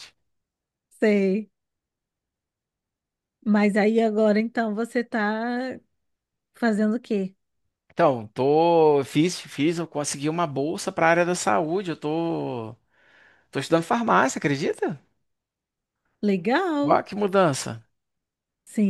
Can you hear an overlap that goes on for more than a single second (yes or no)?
no